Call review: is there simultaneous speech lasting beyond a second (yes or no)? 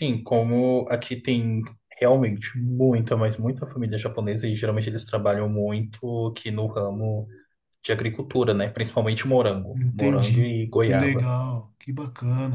yes